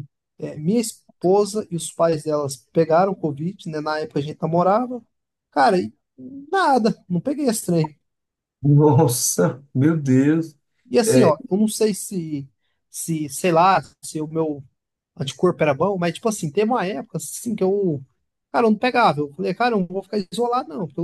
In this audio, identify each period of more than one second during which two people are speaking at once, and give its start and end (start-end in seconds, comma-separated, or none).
none